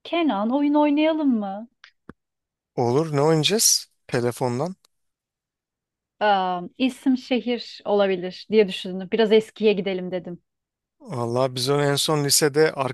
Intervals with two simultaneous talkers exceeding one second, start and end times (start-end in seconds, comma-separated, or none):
none